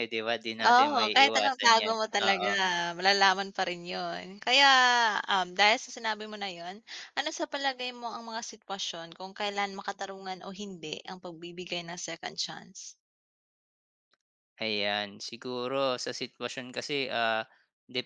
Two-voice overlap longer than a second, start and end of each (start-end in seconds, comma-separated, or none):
0.7-2.5